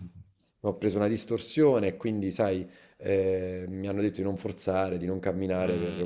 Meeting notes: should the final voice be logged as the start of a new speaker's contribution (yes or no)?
no